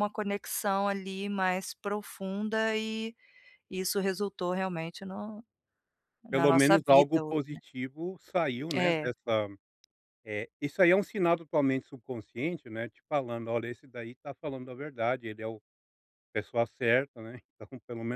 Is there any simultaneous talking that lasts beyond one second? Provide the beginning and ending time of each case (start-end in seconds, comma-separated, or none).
6.3-7.6